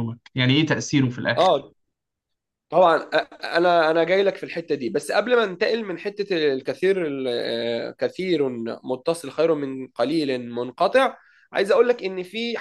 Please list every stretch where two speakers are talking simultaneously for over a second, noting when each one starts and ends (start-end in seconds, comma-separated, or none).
none